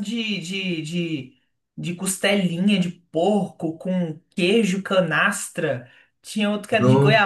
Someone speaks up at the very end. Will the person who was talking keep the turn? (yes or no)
yes